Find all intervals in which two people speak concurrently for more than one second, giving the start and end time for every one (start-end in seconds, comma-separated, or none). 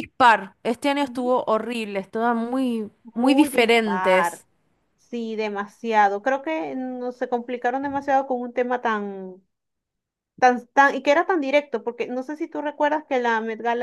3.0-4.4